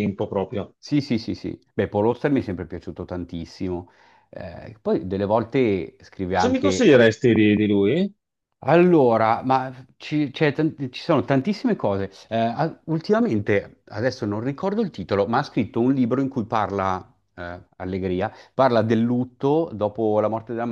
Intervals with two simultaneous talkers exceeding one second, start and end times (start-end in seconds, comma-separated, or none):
none